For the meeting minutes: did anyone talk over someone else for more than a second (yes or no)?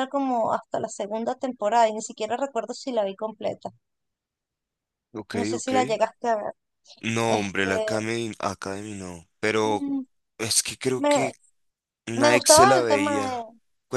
yes